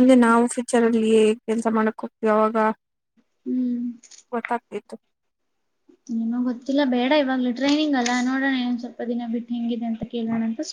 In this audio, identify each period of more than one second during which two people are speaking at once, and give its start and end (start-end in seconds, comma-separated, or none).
none